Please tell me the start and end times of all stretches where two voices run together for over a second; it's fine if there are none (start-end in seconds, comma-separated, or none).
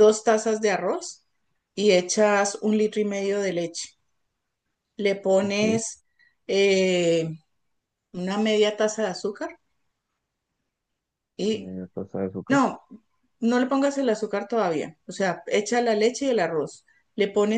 none